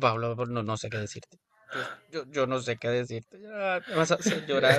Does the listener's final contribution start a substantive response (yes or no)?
yes